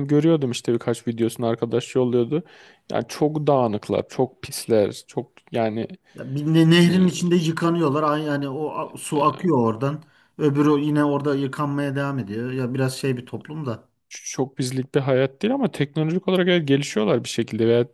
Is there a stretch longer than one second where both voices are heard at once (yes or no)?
no